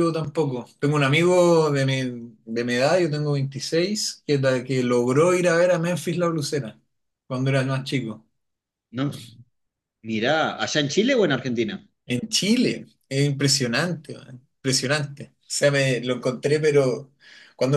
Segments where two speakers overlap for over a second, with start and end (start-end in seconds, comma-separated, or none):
none